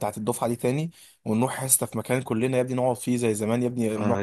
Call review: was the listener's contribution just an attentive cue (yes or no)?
no